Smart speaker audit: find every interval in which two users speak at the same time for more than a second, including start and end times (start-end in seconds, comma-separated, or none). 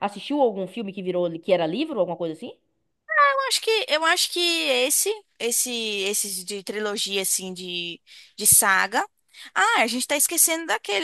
none